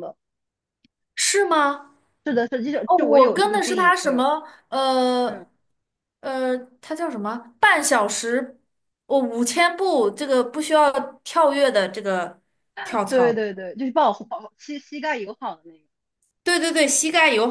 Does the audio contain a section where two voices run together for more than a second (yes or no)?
yes